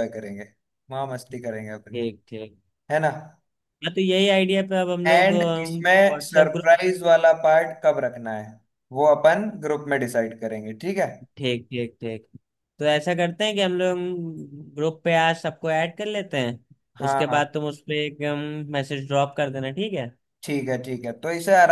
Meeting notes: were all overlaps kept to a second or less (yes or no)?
no